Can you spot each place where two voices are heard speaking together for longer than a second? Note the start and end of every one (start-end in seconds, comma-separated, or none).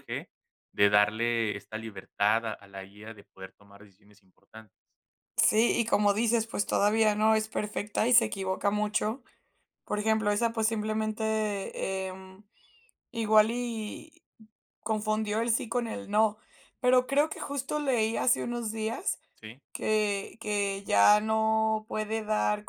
none